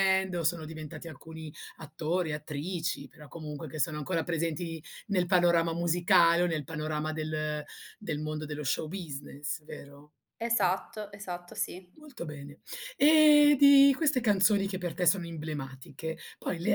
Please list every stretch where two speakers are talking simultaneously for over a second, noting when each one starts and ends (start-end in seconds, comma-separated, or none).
none